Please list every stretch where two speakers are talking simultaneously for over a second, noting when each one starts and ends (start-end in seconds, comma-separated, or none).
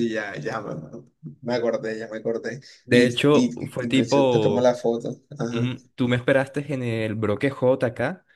2.8-4.7